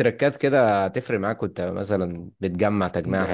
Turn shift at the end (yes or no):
yes